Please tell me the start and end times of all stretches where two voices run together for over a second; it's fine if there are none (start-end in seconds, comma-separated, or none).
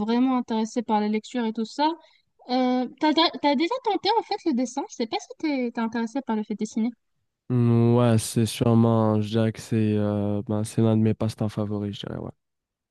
none